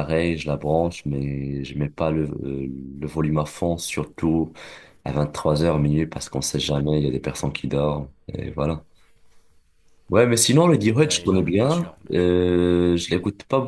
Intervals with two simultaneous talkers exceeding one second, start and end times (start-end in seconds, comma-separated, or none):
11.0-12.3